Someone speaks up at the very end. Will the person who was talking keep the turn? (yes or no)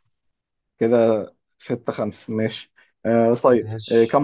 yes